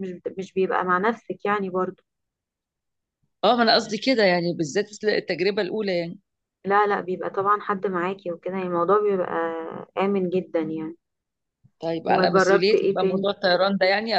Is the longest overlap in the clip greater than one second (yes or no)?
yes